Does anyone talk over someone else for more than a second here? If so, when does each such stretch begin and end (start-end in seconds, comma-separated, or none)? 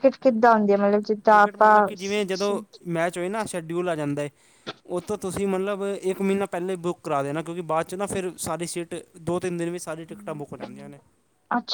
none